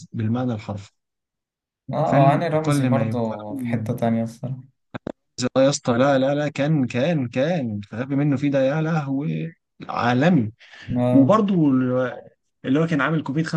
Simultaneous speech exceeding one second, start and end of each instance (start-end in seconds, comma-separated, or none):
2.0-3.8